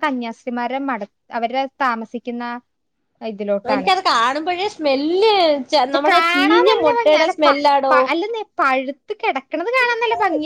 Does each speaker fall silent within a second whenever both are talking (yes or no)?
no